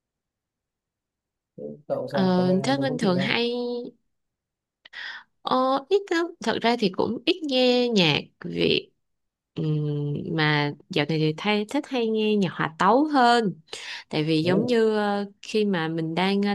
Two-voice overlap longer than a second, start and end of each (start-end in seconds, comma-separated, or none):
2.1-3.4